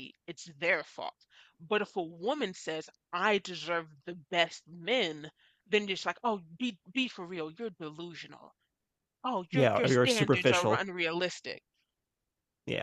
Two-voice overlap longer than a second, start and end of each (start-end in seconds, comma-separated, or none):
9.5-10.9